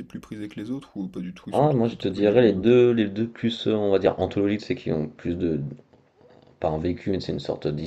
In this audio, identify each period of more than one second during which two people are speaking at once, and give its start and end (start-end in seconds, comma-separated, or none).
1.5-2.8